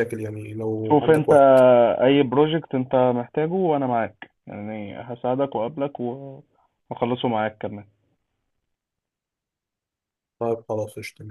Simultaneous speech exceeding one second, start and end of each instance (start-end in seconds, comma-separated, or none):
none